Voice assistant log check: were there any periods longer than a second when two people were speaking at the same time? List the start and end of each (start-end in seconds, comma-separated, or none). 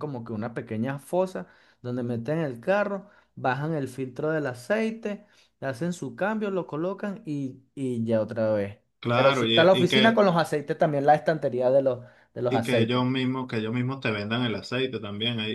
9.0-10.2